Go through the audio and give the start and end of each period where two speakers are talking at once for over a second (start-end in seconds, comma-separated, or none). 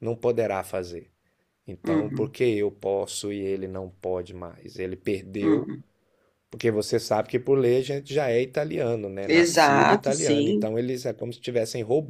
9.2-10.7